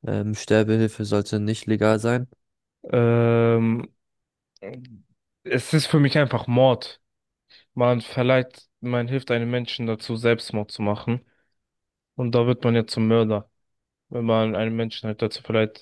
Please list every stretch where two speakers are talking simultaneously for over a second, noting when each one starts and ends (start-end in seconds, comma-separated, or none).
none